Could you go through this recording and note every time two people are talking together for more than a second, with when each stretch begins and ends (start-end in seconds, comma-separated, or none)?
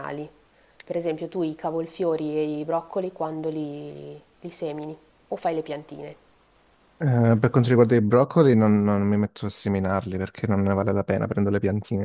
none